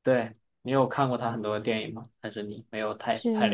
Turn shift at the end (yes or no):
yes